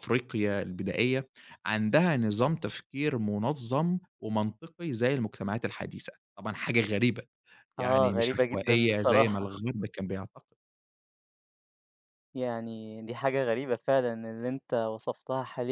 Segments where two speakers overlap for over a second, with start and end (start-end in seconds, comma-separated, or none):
7.8-9.4